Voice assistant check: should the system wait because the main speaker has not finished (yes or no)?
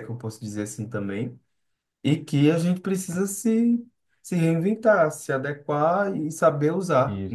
yes